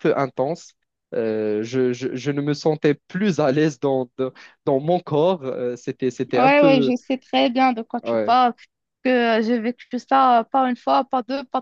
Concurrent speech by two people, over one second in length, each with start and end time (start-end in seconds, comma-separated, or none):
none